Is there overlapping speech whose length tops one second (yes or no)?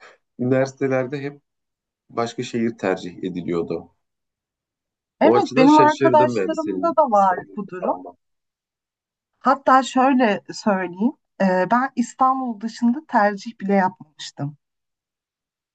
yes